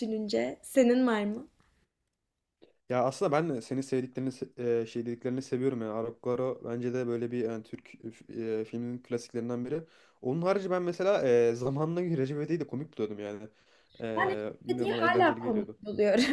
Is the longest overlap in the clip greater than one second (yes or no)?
yes